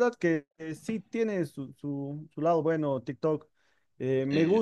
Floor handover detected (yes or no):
no